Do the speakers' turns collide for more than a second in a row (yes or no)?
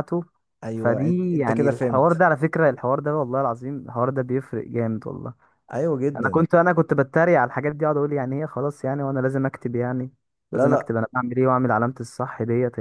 yes